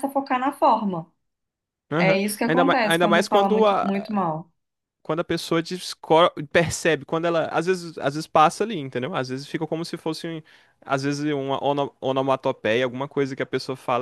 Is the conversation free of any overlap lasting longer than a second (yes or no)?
no